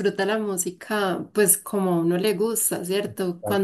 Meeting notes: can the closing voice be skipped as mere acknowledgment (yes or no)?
yes